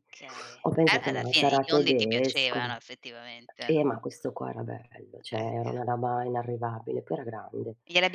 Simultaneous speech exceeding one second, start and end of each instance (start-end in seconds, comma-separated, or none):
0.6-2.7